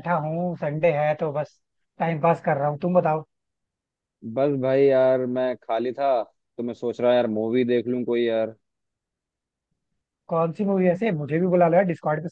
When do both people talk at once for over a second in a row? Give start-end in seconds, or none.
none